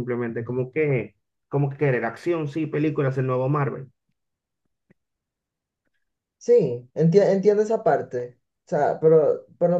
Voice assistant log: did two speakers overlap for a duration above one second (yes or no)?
no